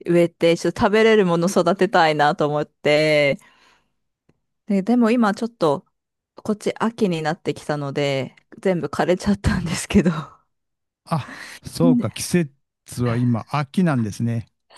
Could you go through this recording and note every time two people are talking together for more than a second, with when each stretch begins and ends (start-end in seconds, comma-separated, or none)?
none